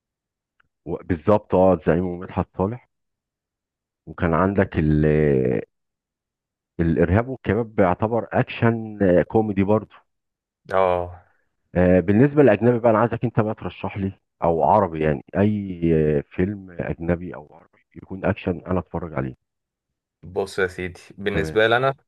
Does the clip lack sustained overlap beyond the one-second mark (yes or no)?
yes